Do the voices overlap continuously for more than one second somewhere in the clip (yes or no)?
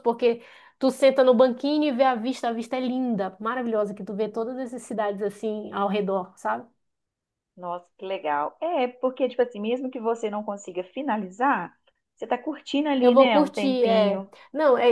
yes